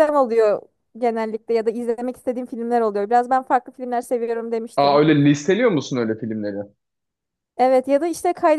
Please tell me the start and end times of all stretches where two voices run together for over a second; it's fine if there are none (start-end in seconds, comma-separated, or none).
none